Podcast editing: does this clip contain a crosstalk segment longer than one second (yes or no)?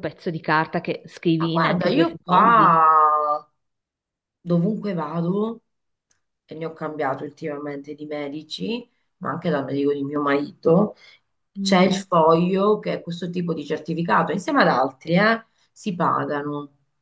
yes